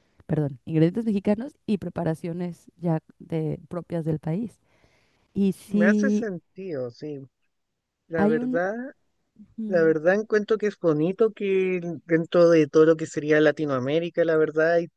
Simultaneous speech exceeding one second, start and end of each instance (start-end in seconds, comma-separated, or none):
none